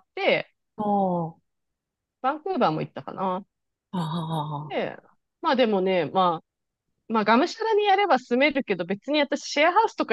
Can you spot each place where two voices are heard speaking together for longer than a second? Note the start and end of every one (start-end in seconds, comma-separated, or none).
none